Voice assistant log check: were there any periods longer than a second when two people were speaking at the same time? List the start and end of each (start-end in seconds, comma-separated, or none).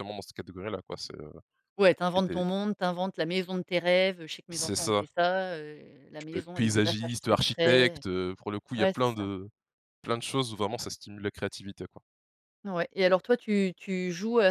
6.2-8.0